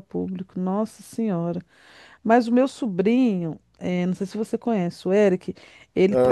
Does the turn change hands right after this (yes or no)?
no